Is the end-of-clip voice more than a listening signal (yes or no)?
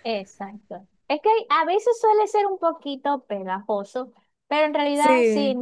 no